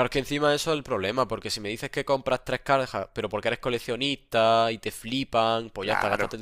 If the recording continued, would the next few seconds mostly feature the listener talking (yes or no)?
no